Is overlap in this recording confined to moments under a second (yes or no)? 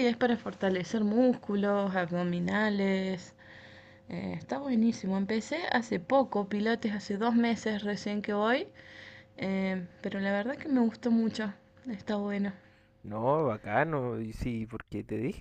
yes